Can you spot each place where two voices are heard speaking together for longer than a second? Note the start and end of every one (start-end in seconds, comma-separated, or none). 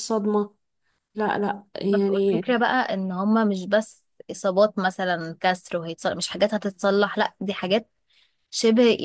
none